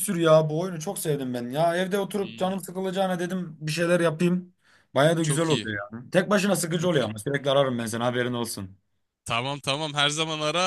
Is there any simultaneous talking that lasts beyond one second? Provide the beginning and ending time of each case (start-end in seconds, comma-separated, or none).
none